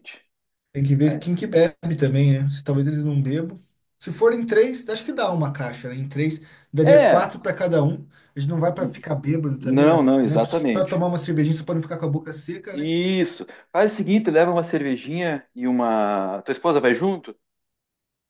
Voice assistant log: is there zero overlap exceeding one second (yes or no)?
no